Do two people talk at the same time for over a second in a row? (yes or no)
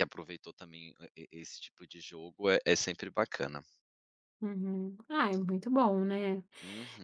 no